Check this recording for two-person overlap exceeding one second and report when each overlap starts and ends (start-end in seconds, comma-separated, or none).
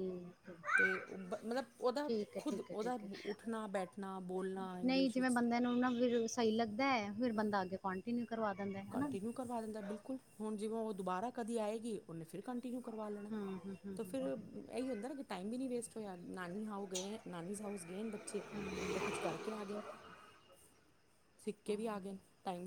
none